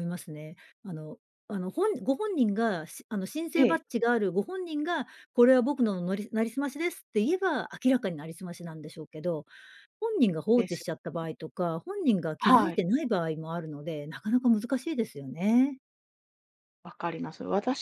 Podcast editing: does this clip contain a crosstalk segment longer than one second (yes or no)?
no